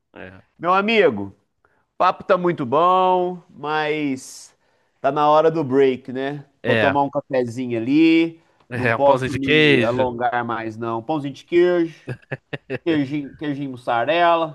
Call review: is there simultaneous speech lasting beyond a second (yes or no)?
yes